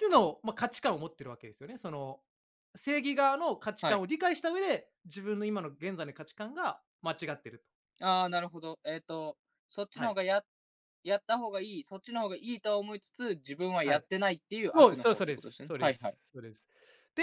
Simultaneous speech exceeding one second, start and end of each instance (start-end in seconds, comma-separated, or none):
14.7-16.2